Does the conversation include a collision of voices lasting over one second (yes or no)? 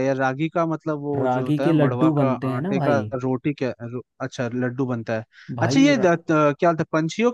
yes